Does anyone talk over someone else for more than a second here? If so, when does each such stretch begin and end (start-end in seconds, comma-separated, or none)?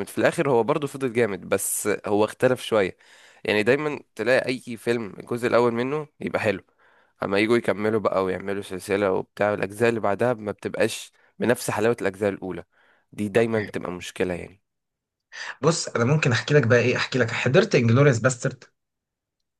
none